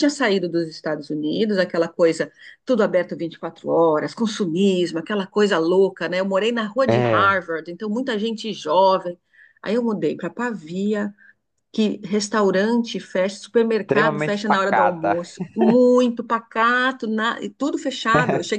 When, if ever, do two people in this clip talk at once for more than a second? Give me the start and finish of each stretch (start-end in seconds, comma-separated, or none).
13.8-15.2